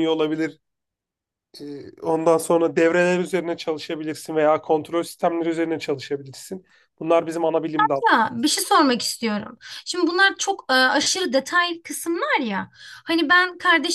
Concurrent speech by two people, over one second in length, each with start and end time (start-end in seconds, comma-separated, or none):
none